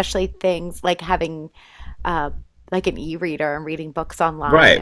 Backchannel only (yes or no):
no